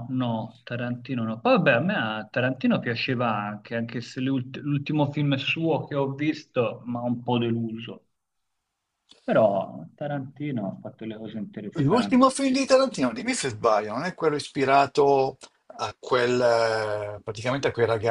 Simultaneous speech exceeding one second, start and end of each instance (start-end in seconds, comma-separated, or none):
none